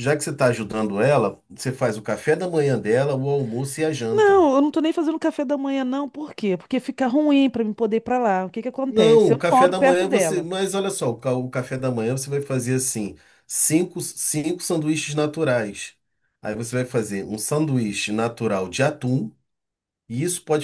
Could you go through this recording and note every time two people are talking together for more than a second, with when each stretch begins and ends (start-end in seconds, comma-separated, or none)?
8.9-10.5